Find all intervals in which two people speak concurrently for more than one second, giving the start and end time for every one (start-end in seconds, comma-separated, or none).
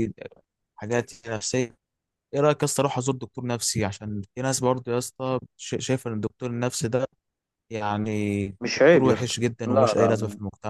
8.6-10.1